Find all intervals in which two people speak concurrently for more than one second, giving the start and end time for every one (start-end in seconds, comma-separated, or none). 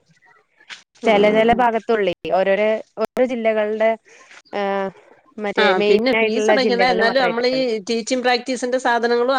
5.6-7.5